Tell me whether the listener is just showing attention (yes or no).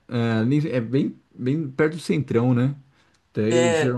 yes